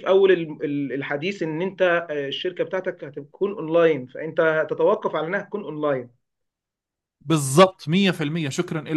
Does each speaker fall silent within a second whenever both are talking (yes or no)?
yes